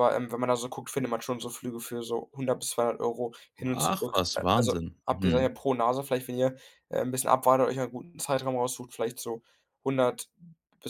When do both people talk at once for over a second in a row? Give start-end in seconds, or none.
3.7-5.5